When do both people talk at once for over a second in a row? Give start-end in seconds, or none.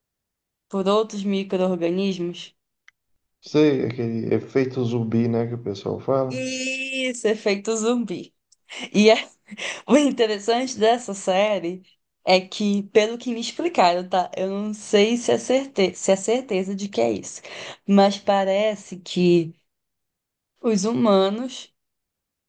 none